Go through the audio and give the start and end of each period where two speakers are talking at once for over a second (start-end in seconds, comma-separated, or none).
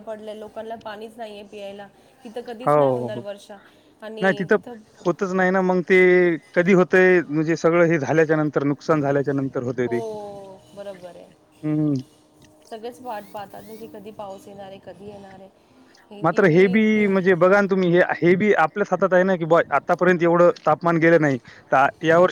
none